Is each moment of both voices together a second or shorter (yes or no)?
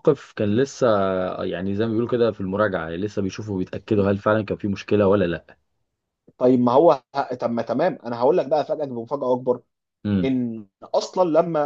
yes